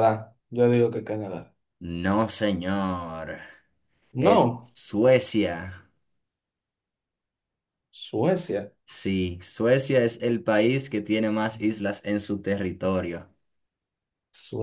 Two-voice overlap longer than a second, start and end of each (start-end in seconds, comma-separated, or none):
none